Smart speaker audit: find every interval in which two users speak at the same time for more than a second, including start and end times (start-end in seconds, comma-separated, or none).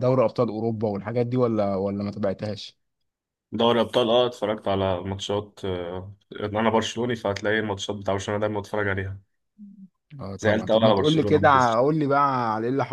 10.4-11.8